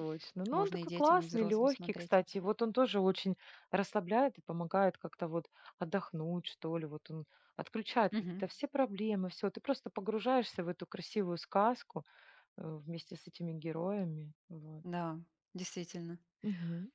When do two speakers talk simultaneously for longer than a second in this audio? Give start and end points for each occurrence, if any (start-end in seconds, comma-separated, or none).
0.5-2.2